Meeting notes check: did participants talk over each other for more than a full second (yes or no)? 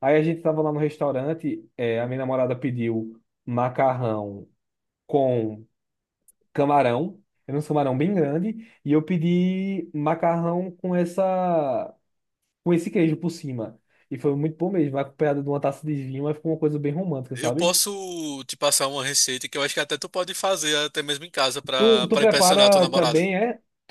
yes